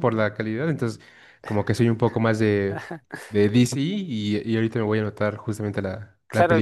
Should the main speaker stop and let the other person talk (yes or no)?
yes